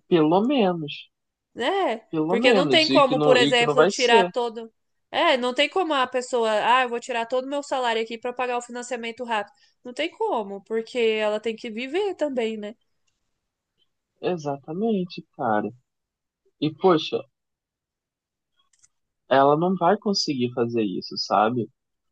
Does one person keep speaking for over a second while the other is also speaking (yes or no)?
yes